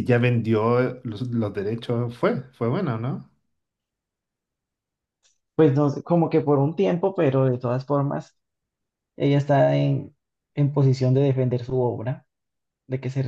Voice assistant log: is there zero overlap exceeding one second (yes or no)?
yes